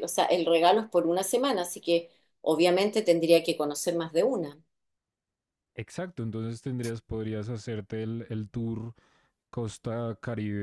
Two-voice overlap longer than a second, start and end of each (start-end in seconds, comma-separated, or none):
none